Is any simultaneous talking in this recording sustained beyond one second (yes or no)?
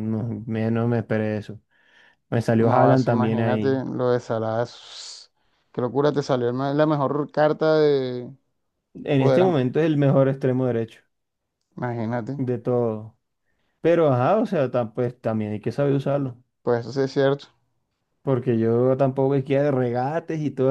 yes